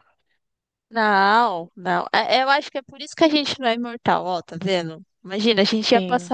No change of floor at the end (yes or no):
yes